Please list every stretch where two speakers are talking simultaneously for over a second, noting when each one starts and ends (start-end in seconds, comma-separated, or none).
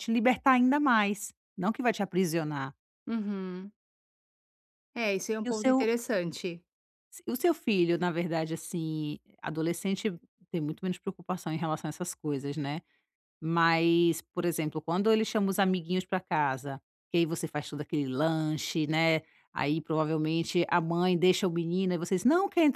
none